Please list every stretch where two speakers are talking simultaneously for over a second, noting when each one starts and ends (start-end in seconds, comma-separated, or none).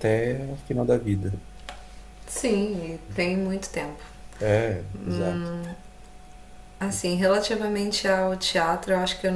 none